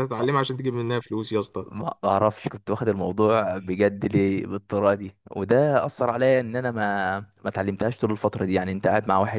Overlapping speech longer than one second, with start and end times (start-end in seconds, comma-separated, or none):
none